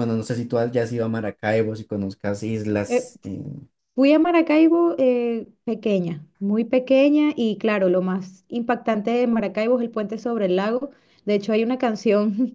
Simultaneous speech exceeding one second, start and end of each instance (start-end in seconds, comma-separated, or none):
none